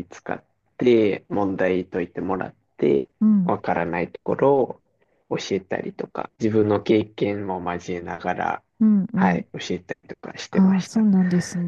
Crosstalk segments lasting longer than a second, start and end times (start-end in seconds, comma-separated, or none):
none